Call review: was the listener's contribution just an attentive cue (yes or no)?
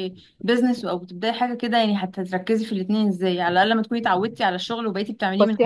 no